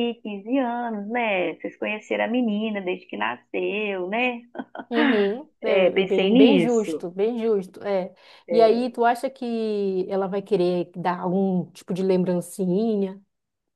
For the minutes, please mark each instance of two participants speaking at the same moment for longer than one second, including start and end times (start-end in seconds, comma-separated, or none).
5.6-7.1